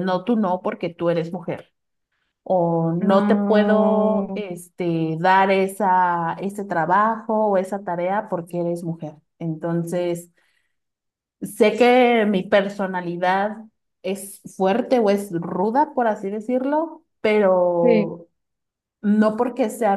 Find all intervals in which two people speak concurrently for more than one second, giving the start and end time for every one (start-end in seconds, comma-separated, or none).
3.0-4.4